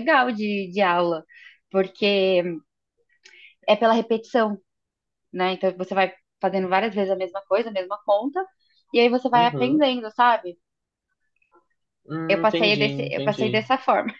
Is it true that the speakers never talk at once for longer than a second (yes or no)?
no